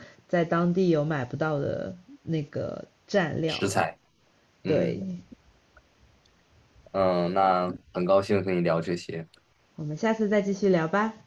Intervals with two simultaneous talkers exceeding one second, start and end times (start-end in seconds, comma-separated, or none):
none